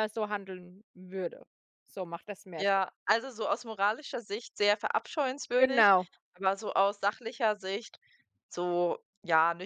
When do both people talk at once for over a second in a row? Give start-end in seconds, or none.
none